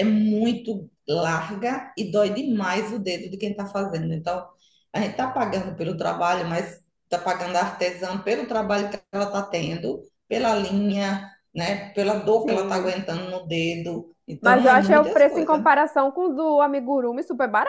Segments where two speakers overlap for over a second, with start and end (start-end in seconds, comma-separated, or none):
14.4-15.6